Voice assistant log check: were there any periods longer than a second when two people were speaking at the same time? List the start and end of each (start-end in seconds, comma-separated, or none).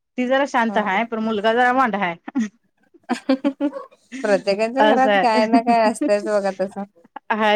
4.8-6.1